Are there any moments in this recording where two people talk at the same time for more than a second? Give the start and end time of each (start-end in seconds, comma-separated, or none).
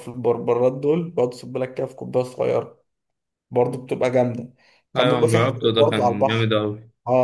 5.0-6.5